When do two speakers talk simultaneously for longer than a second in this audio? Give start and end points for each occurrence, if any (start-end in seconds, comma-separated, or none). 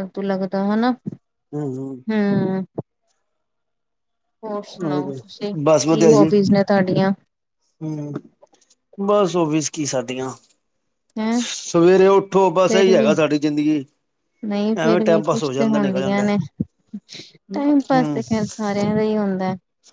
14.8-16.2